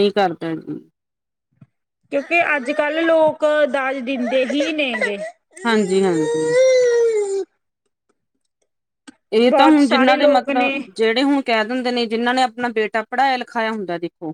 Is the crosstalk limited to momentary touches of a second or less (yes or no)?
no